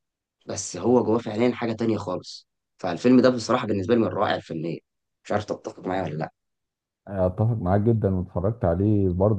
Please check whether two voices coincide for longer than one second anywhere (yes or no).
no